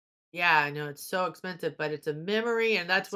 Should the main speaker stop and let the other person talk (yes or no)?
yes